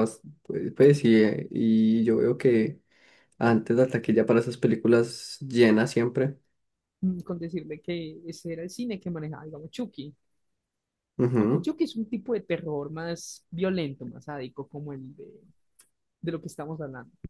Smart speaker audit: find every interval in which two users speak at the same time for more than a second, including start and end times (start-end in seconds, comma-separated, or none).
none